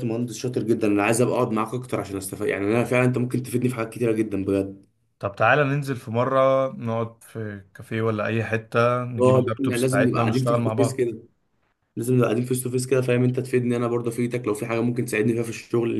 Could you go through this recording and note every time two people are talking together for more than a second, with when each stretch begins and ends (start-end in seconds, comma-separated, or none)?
9.2-11.0